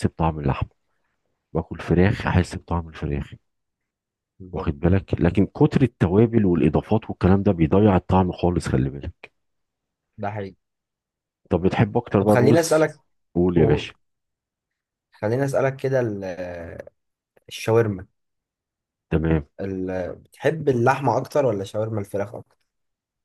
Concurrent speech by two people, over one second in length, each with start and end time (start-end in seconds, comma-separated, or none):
none